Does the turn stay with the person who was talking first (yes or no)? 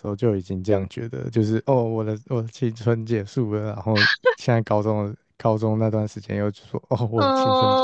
no